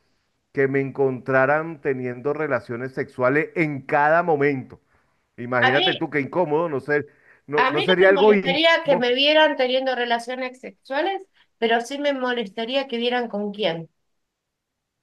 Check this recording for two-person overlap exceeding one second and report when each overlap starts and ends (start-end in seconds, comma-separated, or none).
7.6-9.1